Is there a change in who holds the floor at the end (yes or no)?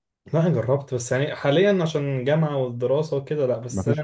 no